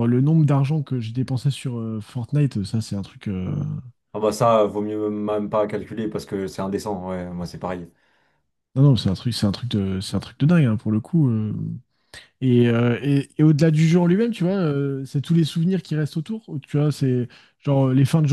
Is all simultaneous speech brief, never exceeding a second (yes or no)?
yes